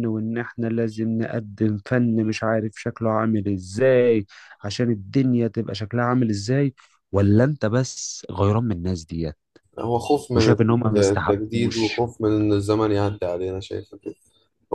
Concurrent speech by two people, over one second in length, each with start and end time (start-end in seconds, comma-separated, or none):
10.3-12.1